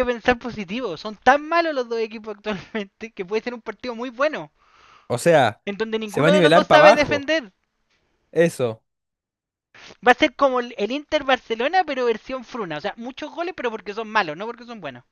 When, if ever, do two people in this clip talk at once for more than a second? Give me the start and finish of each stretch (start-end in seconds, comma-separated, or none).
6.0-7.3